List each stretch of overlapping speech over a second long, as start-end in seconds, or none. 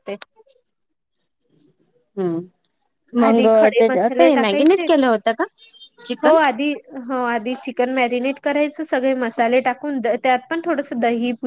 3.3-4.8